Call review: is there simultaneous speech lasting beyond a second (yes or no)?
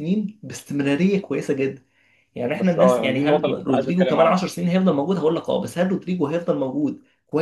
yes